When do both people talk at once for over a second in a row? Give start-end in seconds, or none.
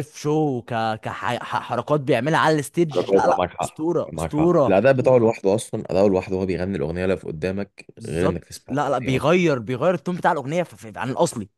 2.9-4.8, 8.0-9.3